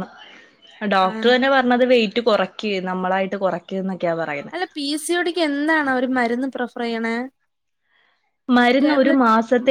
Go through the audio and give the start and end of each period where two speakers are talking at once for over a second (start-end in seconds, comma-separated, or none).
none